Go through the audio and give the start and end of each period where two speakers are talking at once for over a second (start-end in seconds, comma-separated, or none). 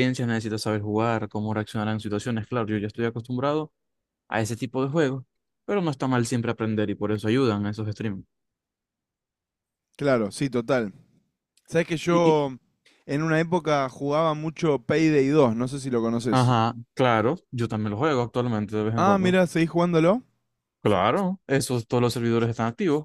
none